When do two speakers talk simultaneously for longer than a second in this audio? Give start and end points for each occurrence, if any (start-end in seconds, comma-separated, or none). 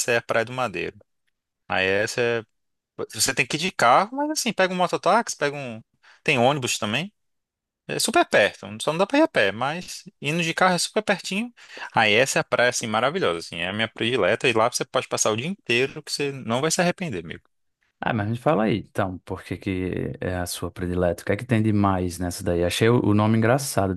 none